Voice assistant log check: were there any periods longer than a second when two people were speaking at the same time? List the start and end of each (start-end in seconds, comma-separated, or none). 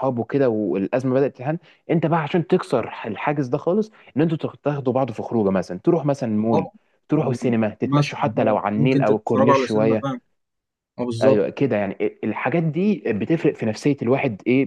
7.8-10.1